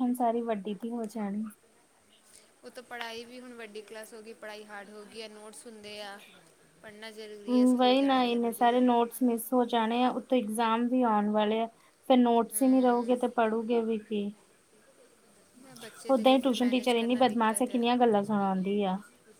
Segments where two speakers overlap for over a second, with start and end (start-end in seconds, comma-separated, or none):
16.1-17.8